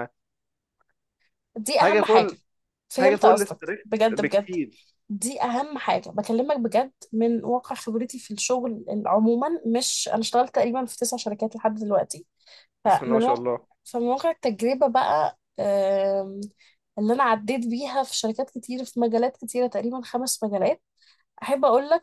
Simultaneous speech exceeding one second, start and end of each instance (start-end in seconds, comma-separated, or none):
3.0-4.5